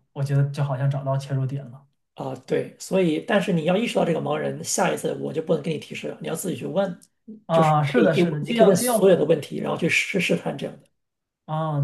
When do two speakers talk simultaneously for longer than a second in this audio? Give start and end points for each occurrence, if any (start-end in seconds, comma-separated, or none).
7.5-9.1